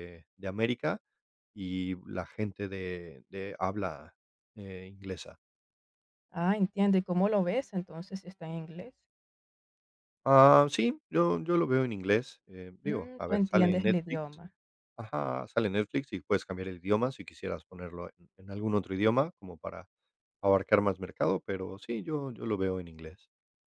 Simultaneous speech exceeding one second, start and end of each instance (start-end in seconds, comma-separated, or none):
12.8-14.4